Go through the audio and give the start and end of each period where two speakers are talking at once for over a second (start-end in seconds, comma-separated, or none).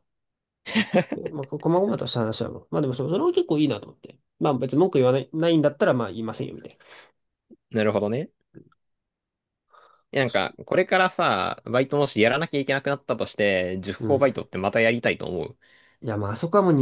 none